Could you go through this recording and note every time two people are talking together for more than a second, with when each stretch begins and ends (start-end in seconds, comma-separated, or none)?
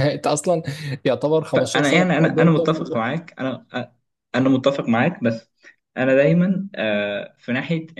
1.5-3.0